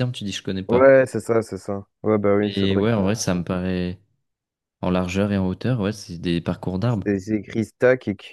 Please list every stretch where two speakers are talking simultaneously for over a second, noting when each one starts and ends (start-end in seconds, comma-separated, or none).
none